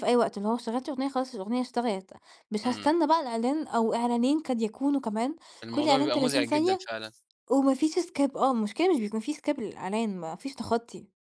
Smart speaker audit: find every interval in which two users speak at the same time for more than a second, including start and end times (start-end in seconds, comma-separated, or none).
5.6-6.9